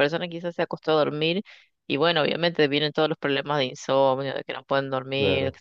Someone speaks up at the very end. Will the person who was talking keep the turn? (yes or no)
yes